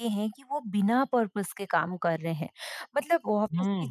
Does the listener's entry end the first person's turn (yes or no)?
no